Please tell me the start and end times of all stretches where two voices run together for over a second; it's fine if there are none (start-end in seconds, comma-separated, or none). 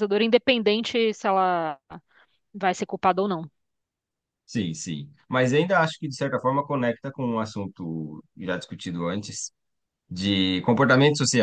none